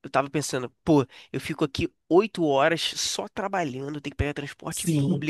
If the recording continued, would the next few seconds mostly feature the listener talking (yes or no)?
no